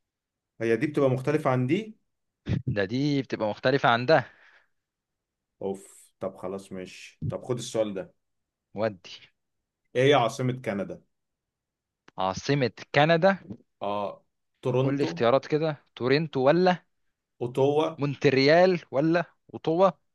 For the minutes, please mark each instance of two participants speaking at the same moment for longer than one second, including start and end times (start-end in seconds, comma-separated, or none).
none